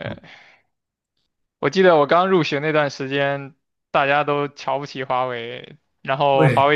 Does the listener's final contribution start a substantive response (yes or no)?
no